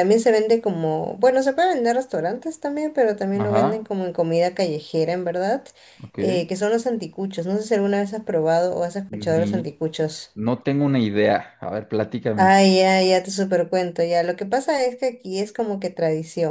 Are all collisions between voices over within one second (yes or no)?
yes